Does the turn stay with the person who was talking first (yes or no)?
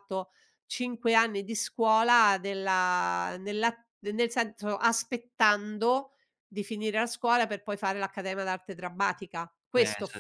no